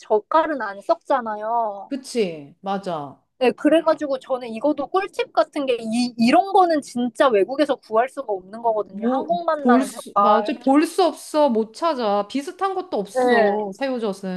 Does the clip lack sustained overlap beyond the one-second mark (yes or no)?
no